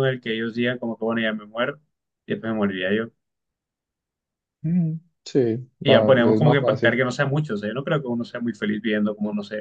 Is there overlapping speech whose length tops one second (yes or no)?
yes